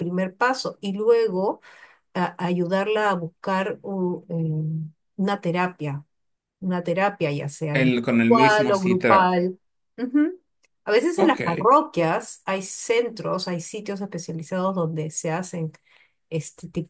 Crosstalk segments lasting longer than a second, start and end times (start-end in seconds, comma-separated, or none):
7.7-9.3